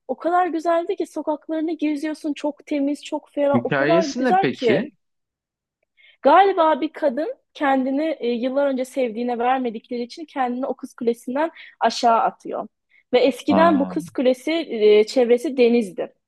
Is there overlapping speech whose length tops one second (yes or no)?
yes